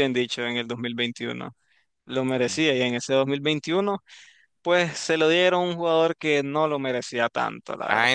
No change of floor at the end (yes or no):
no